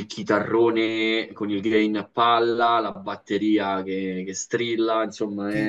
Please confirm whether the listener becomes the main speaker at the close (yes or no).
yes